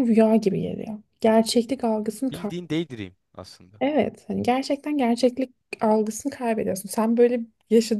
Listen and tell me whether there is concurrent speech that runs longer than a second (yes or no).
no